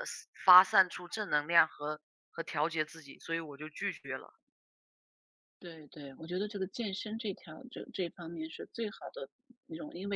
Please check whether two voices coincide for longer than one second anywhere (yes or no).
no